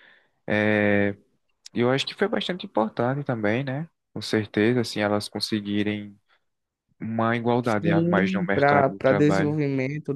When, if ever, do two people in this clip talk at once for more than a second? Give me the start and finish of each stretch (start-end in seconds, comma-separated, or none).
7.8-9.6